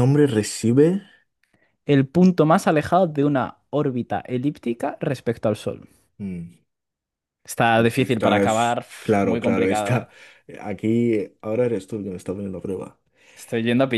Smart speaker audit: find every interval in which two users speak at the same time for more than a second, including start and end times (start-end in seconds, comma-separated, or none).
7.8-10.1